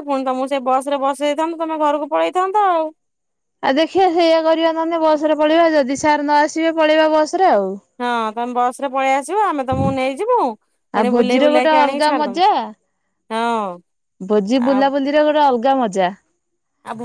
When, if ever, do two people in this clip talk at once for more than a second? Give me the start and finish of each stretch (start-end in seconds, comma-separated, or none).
11.0-12.5